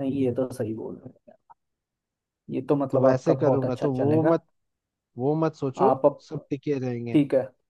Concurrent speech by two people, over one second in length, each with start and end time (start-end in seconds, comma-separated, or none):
2.9-4.3